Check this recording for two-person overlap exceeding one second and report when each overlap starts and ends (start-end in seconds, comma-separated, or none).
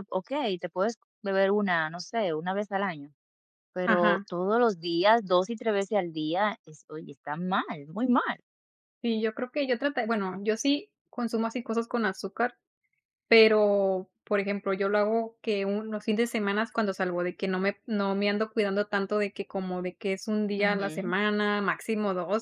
none